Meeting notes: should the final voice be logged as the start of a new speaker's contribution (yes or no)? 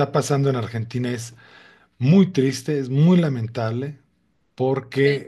no